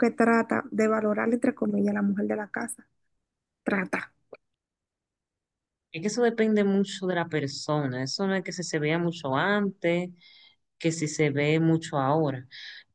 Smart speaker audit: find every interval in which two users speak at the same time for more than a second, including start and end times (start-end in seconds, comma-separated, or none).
none